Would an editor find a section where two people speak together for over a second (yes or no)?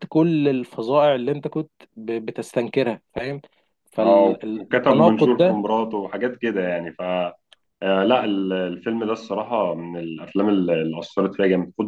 yes